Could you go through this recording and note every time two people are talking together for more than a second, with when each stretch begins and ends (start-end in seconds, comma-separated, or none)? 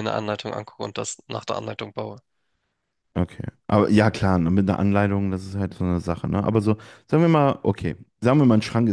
none